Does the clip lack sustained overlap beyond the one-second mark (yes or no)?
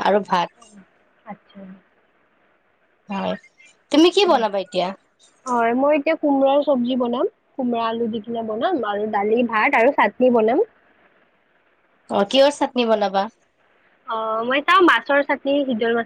yes